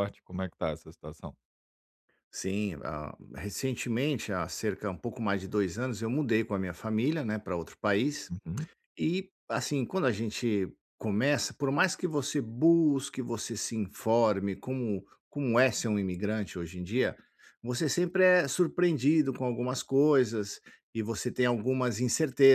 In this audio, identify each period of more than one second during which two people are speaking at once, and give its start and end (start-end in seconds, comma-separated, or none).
none